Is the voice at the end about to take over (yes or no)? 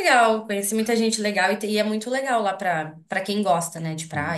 yes